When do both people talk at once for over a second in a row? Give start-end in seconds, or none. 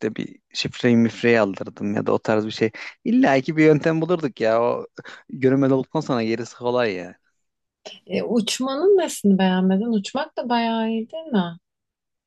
none